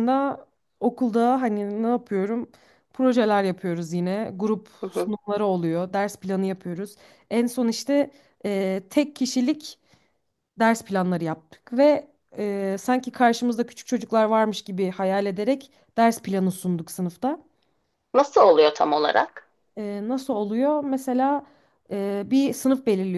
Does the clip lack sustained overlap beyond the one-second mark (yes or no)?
yes